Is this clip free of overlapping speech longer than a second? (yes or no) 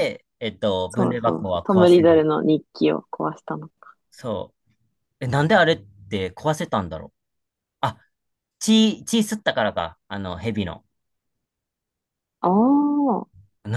no